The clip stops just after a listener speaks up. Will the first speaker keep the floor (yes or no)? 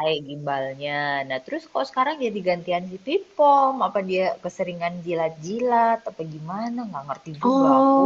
no